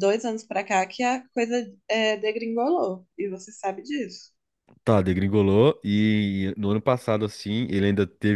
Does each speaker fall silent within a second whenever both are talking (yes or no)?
yes